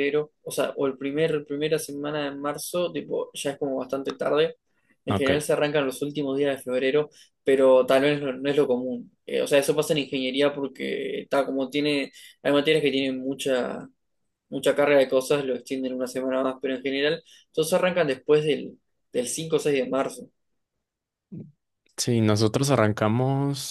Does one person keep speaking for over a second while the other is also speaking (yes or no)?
no